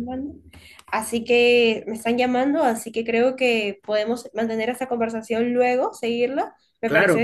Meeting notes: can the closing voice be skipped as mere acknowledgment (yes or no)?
no